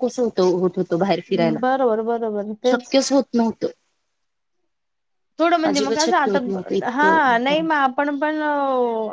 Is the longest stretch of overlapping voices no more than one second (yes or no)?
no